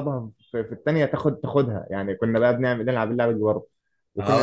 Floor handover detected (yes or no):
yes